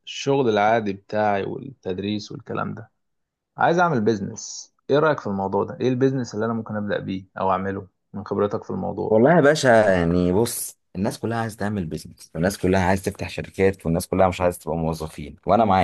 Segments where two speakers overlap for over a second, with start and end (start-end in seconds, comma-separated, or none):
none